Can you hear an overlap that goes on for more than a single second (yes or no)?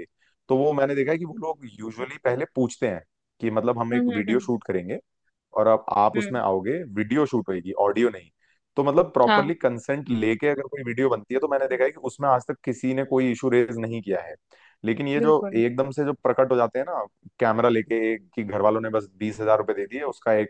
no